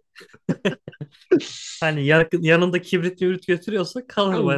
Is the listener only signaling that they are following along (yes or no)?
no